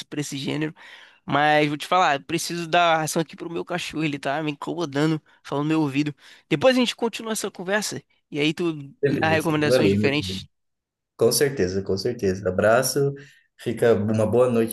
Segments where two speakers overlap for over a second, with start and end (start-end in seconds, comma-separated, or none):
9.1-10.4